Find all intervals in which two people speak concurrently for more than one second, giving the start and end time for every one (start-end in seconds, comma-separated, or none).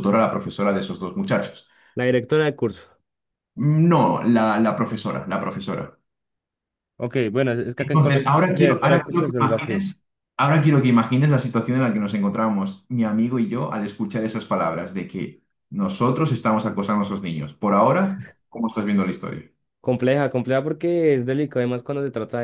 7.8-9.9